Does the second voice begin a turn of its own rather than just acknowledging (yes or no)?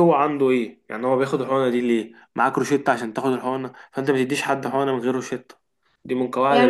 yes